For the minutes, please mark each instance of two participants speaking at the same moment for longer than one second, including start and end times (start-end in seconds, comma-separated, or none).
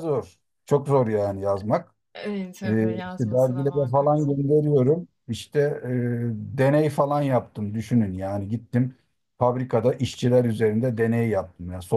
2.6-4.3